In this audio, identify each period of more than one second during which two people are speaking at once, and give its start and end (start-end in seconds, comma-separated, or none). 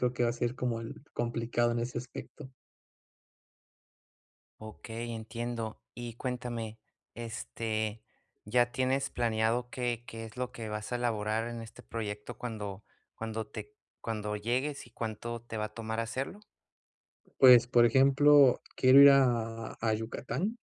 none